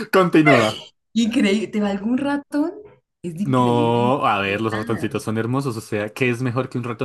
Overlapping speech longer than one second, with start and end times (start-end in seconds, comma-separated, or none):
3.4-5.2